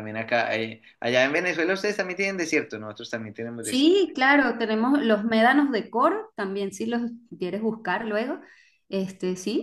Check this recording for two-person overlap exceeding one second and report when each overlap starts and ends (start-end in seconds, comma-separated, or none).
none